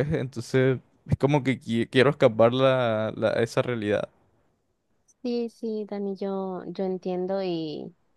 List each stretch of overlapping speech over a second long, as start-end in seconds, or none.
none